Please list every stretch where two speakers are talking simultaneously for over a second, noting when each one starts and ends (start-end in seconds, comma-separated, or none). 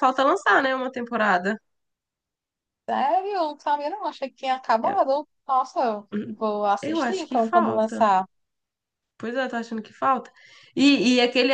6.8-8.1